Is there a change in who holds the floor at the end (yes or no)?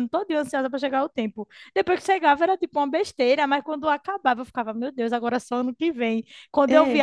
no